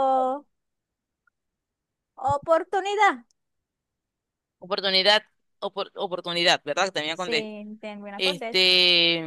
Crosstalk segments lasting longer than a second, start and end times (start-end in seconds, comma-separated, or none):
none